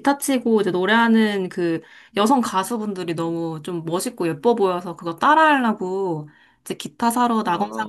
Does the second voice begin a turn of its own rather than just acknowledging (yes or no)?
no